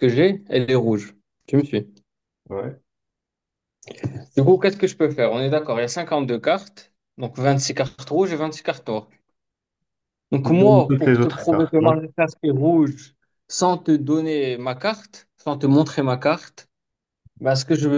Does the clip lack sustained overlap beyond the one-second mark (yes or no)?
no